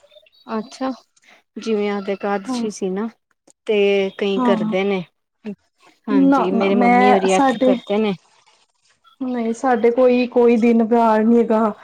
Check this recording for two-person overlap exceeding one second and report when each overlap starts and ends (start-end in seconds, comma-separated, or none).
6.3-7.8